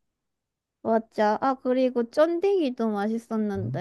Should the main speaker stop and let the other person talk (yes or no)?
yes